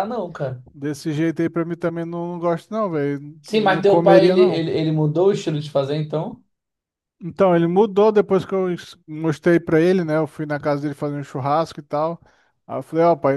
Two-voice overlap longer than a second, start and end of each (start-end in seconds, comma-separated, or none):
3.4-4.7